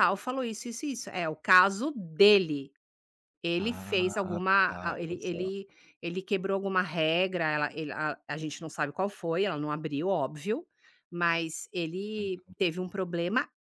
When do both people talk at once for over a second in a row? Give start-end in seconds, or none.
3.6-5.4